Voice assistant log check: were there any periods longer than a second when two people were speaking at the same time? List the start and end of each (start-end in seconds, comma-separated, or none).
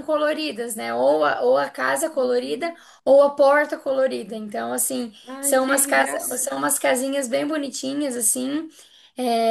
5.3-6.5